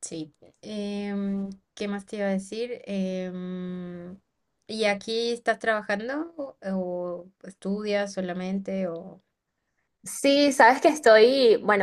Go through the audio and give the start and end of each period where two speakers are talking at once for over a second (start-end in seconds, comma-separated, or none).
none